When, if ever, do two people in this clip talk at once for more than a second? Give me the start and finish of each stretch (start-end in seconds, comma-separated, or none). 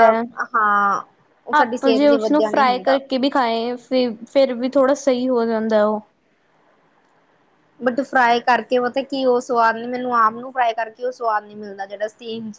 1.6-3.0